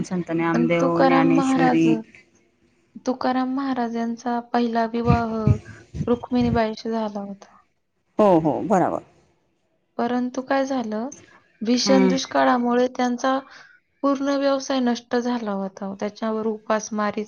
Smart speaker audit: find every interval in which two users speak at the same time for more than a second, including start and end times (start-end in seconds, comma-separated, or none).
0.6-1.9